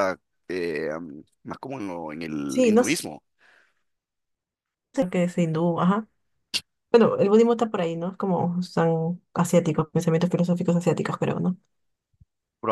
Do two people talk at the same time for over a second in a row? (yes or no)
no